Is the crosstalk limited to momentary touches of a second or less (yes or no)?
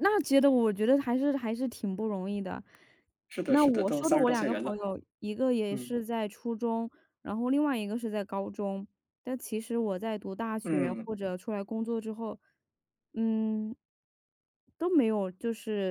no